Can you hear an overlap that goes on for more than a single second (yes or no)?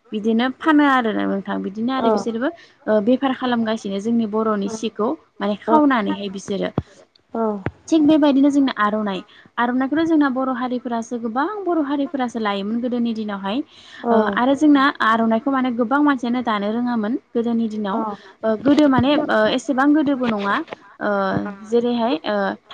yes